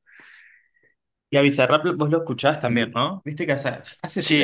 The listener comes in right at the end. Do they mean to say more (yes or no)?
yes